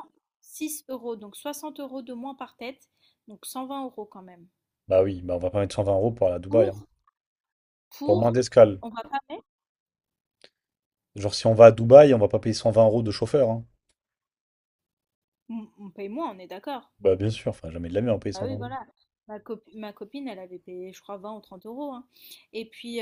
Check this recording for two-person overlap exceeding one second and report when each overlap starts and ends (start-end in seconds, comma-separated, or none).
none